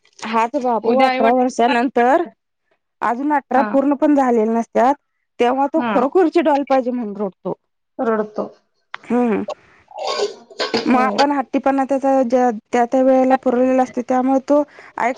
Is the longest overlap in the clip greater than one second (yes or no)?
yes